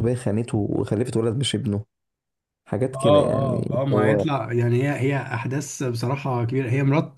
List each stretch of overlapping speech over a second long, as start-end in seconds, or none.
2.9-4.2